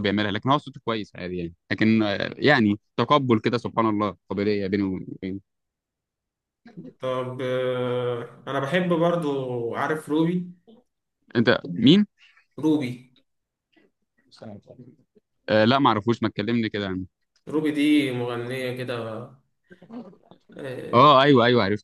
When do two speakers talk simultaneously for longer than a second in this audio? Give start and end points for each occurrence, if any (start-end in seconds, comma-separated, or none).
none